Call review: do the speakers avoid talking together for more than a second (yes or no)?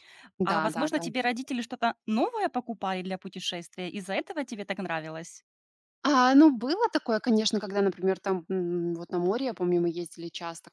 yes